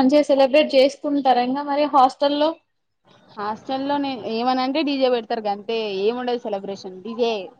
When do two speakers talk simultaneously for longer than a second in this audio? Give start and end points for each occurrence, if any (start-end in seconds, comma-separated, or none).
none